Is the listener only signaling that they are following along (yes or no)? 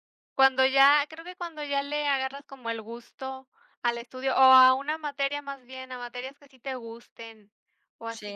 yes